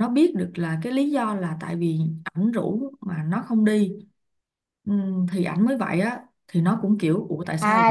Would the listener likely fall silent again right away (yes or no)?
no